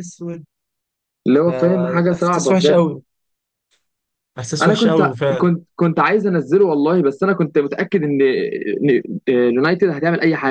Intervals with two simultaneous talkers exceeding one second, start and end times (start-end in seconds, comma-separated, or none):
1.4-2.8